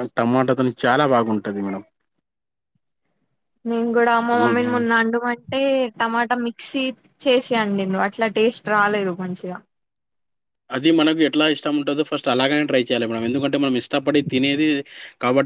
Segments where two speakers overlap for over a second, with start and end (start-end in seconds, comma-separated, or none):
none